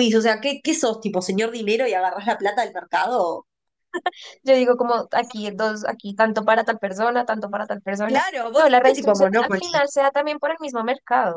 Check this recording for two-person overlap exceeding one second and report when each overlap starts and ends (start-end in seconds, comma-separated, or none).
8.1-9.6